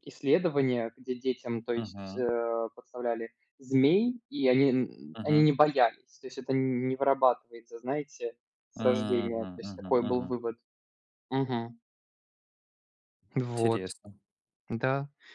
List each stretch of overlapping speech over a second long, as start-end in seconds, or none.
8.7-10.3